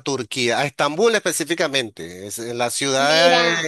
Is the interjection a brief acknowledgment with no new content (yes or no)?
yes